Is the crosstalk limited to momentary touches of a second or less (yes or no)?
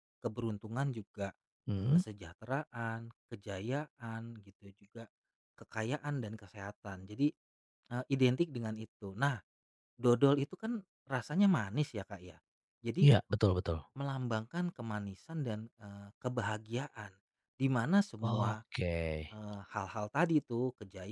yes